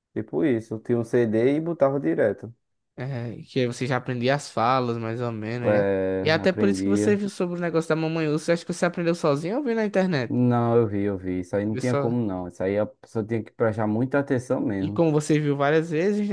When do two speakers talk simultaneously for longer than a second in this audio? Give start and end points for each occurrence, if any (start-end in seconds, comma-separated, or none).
5.6-7.2